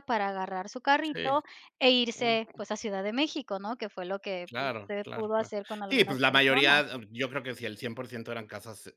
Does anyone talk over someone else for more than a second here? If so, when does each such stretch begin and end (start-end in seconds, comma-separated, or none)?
4.4-6.8